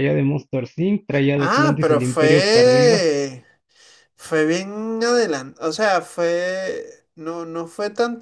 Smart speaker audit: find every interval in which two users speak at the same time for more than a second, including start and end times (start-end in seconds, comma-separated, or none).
1.4-3.1